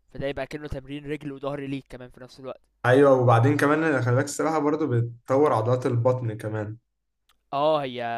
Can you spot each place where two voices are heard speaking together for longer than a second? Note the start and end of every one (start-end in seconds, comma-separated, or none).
none